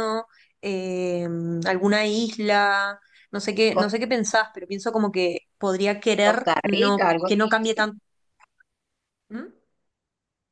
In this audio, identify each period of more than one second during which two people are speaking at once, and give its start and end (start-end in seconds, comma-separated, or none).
6.2-7.9